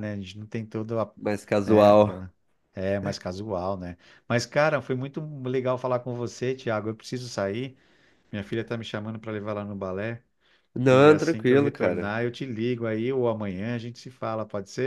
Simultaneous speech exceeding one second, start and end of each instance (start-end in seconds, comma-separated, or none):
10.9-12.1